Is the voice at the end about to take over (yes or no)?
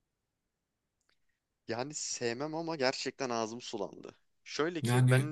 no